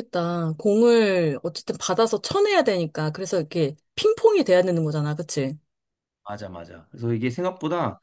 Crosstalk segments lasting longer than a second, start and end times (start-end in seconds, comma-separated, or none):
none